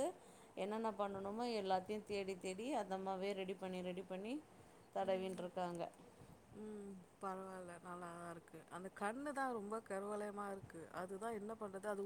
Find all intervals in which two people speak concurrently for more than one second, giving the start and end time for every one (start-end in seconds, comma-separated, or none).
none